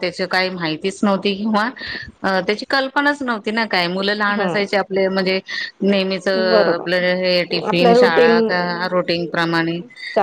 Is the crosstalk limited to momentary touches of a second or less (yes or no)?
no